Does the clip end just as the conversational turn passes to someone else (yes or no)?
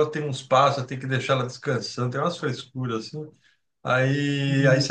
no